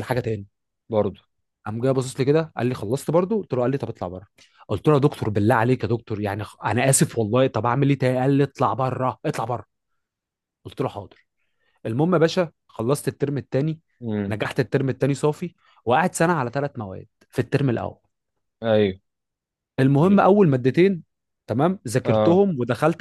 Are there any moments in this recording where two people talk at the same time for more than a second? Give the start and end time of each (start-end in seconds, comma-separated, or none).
none